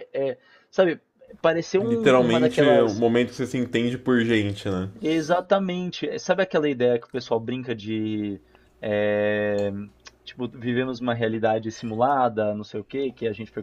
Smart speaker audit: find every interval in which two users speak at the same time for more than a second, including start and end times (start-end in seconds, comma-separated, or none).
1.8-3.0